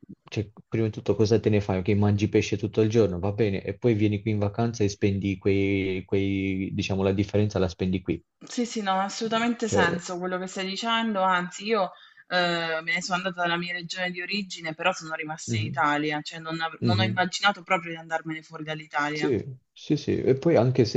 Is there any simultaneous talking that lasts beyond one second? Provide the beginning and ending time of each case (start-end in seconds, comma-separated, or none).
none